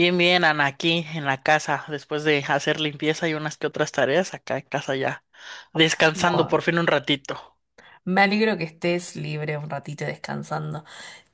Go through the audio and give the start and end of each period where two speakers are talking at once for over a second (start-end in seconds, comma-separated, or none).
none